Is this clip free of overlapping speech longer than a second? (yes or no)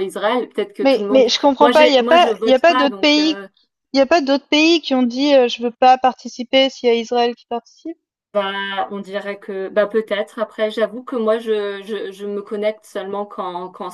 no